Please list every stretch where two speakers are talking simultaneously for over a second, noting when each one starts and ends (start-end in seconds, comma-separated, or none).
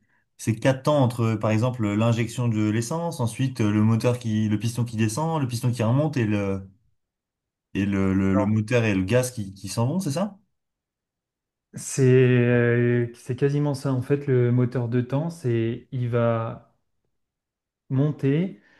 none